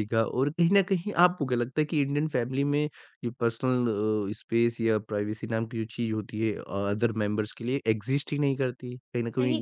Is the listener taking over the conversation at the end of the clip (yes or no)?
no